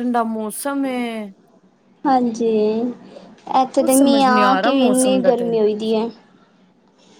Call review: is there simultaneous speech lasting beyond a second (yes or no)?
yes